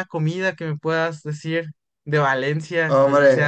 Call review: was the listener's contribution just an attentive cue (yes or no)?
no